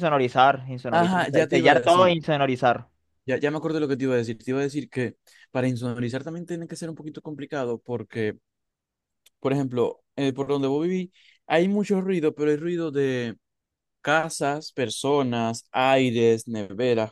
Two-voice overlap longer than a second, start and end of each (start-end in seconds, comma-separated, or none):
0.9-2.1